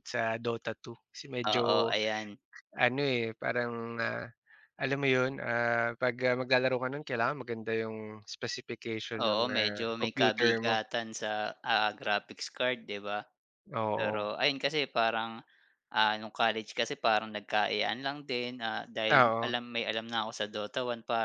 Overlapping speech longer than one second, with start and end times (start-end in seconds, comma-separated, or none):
9.2-10.8